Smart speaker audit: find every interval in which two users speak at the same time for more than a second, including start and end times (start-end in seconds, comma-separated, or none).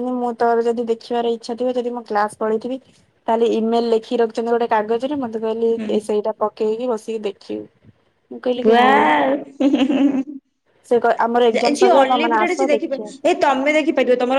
11.5-13.1